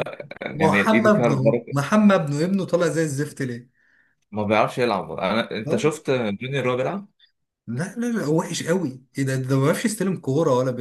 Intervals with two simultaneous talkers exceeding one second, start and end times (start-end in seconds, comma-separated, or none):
0.5-1.8